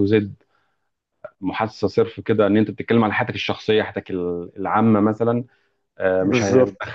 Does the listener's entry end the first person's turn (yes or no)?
no